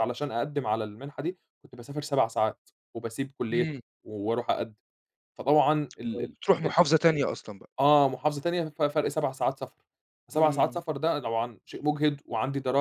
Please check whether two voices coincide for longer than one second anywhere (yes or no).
no